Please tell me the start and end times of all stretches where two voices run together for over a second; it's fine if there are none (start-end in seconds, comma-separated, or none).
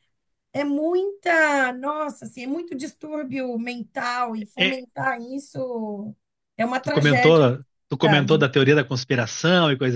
none